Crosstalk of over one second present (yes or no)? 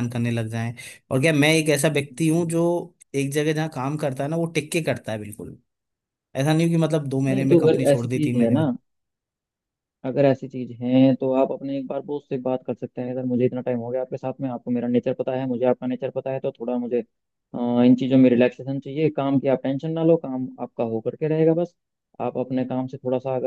yes